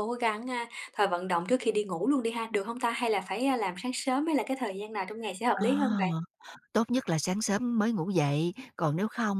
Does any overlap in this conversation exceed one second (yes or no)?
no